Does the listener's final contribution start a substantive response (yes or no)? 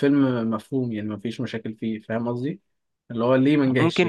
yes